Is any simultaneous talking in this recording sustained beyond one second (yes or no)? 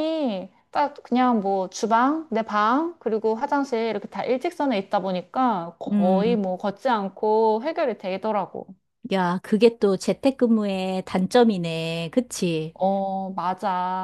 no